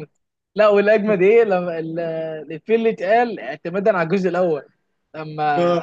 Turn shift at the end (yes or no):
no